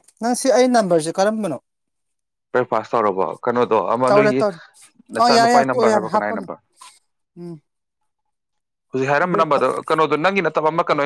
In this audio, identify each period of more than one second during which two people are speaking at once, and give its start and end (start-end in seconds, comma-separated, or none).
5.2-6.5